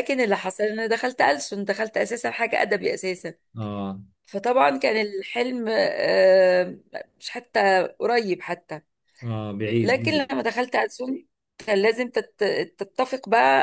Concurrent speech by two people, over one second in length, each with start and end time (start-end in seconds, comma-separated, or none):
none